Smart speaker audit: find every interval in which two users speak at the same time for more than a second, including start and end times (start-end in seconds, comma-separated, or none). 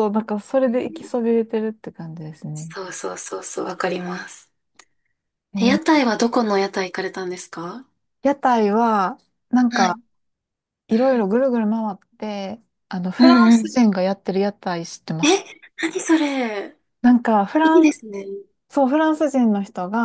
none